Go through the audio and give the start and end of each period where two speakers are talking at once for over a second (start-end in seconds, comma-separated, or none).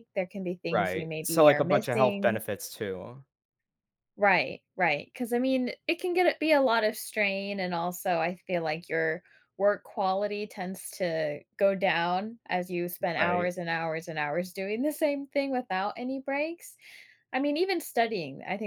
0.7-2.4